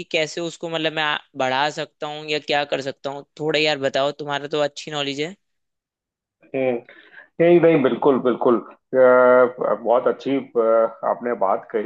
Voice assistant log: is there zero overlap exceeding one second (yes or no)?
yes